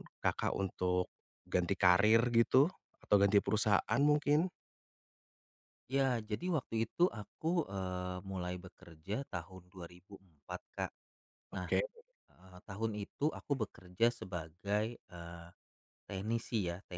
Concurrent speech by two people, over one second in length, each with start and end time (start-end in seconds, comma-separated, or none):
none